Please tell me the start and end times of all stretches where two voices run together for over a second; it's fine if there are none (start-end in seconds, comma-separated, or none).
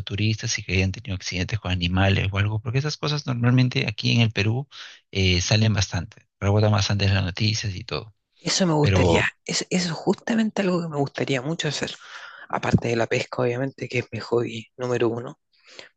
none